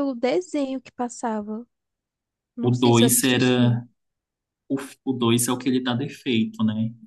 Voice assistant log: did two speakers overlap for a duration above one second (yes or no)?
yes